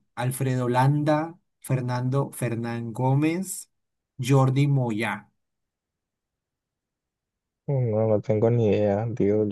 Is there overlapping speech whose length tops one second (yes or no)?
no